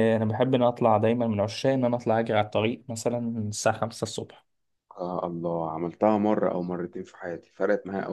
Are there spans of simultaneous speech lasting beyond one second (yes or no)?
no